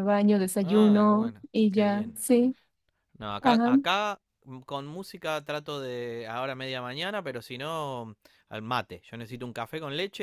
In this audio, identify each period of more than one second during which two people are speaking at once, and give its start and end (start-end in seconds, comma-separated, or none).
0.6-2.2